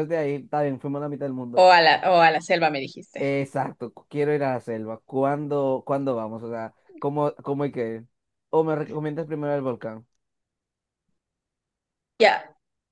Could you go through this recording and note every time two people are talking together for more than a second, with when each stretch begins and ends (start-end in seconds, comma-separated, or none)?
none